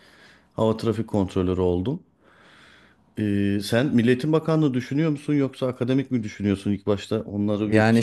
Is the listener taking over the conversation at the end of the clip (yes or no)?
yes